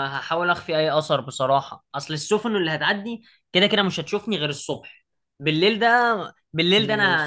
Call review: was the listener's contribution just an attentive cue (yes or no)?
yes